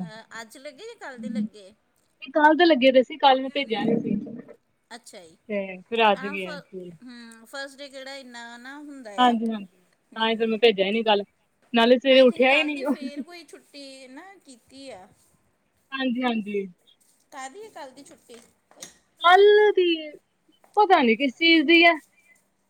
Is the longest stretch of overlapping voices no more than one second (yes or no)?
yes